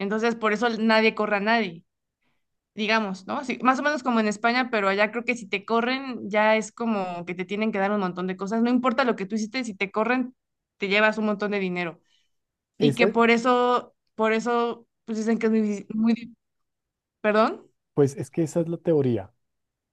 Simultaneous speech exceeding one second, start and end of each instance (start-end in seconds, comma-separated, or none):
none